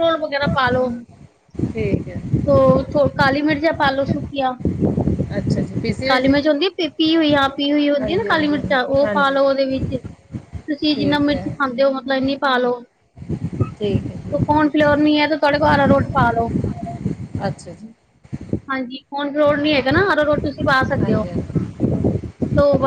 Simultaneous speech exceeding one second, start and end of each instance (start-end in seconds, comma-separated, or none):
8.0-9.4